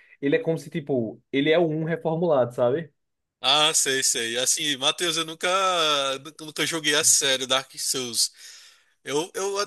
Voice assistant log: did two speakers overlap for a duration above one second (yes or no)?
no